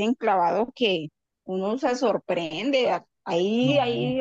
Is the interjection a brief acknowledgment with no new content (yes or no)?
yes